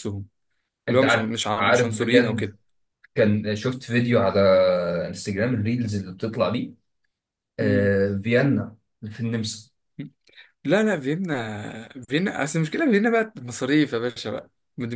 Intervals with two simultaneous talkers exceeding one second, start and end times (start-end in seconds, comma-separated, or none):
0.9-2.5